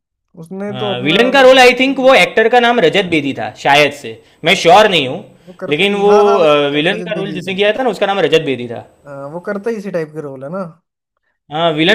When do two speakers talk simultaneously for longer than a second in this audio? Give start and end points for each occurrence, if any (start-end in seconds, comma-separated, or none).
0.7-2.2, 5.7-7.5